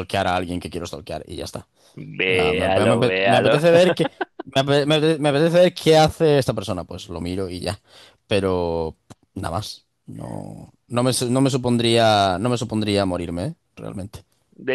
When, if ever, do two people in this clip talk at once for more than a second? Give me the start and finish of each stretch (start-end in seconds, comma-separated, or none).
2.3-3.5